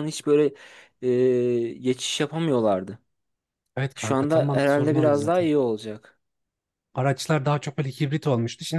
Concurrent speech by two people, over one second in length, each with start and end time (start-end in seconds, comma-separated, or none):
3.9-5.5